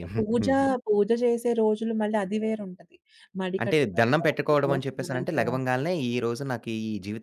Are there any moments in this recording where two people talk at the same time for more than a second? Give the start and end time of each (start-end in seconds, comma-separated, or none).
3.6-5.7